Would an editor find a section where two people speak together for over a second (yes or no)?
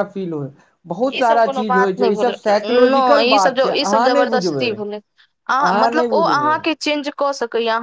yes